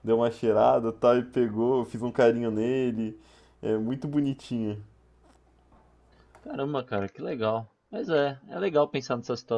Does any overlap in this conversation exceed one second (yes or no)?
no